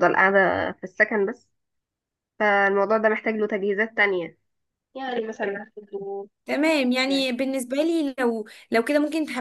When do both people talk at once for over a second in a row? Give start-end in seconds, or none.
none